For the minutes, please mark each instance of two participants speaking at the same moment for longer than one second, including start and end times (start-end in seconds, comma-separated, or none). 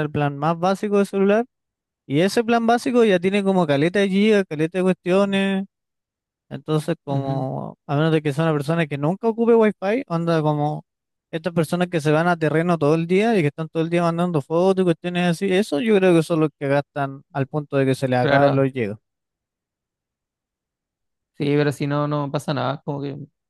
none